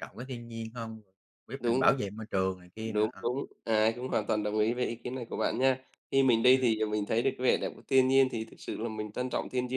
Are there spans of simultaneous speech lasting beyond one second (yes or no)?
no